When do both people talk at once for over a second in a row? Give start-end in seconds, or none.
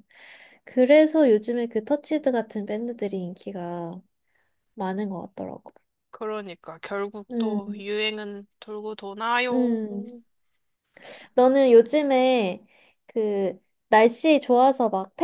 none